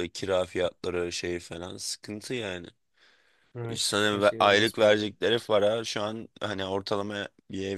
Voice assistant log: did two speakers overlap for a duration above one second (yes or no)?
yes